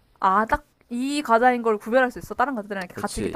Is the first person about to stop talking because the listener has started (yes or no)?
yes